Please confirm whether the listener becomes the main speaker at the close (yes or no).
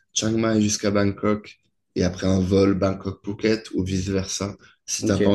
no